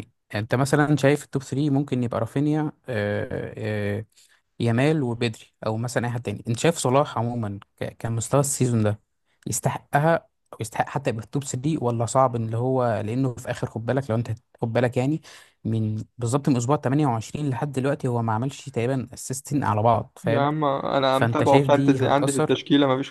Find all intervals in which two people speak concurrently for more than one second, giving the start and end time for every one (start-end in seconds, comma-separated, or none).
21.1-22.6